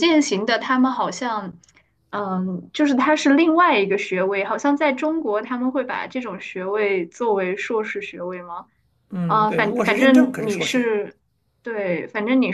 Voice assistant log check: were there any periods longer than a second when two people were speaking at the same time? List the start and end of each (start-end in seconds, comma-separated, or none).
9.2-10.9